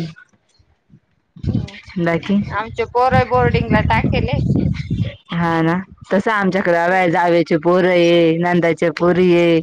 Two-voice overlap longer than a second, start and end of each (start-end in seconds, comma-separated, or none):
none